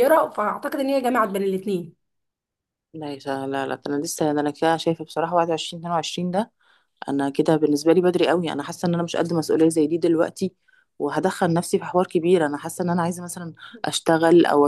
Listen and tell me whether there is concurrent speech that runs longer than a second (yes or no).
no